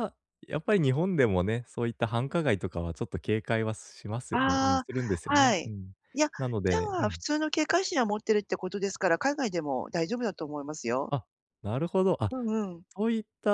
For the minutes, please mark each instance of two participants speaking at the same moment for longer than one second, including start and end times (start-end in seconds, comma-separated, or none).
4.3-5.7